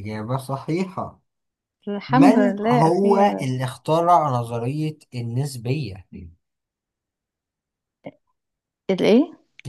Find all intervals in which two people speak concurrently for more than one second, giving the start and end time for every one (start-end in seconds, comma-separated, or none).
2.1-3.4